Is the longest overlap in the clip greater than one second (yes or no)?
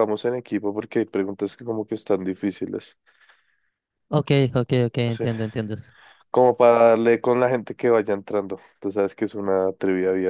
no